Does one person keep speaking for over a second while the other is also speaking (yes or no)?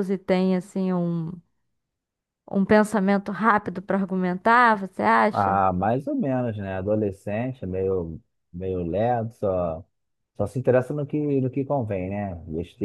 no